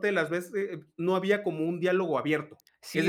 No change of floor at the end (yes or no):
no